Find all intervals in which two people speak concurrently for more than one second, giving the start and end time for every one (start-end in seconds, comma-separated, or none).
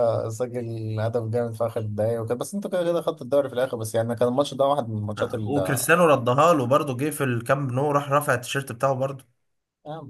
none